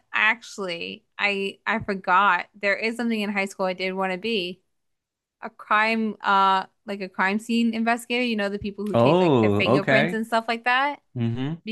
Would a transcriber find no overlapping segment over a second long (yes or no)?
no